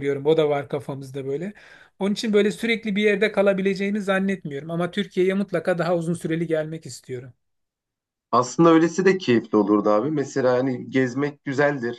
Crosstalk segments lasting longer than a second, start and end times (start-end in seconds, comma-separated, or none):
none